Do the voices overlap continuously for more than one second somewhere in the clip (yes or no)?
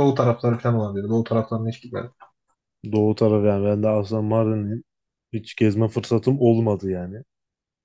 no